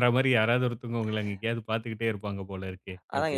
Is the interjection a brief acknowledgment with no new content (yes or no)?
no